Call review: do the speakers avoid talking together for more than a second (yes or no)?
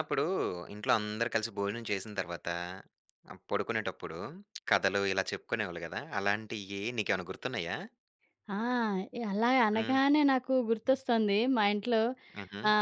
yes